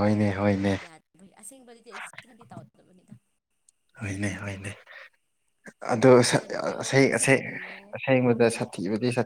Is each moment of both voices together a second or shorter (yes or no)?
yes